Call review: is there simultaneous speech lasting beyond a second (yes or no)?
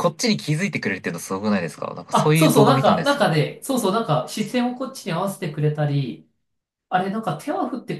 yes